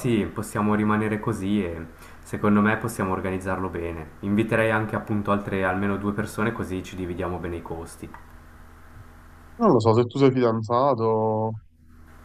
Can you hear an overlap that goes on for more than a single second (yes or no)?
no